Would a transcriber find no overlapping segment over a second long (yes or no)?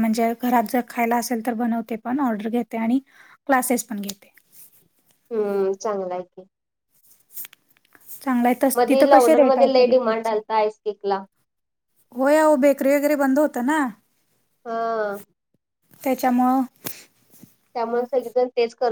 no